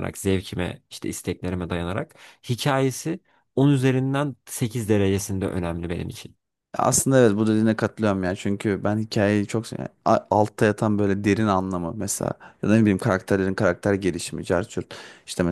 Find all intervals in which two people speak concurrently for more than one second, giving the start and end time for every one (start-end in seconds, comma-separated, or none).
none